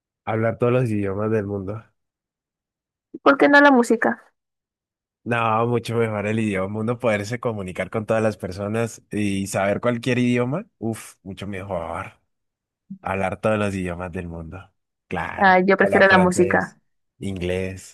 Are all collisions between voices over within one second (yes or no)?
no